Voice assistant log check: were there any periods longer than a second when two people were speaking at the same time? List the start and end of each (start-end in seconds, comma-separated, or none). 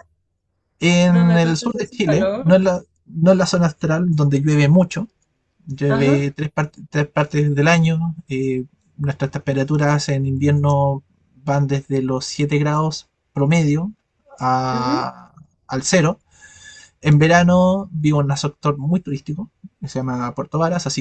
1.1-2.5